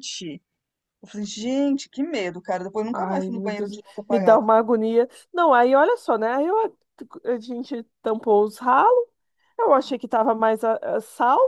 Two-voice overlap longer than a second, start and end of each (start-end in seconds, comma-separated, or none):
2.9-4.4